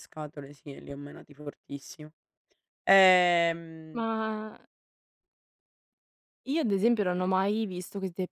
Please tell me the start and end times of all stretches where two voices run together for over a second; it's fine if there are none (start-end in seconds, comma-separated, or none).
none